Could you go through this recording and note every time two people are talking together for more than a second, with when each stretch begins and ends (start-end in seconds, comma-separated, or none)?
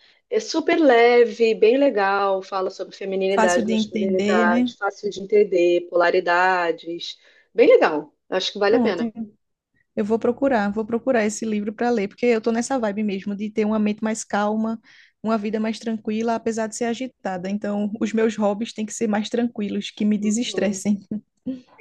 3.3-4.7